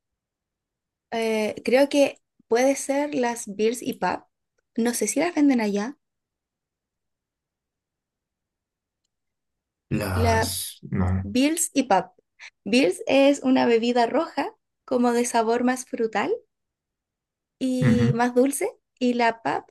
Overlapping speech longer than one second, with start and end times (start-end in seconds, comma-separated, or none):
none